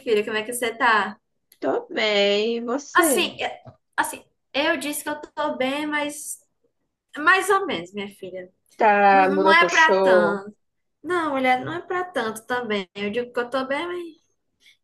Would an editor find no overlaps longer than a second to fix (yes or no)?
no